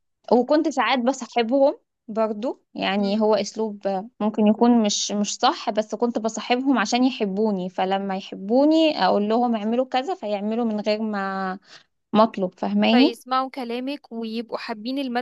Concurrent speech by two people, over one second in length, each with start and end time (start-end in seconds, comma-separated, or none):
none